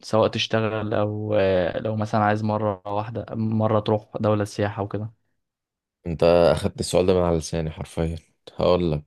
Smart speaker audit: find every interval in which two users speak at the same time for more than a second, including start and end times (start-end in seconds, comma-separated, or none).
none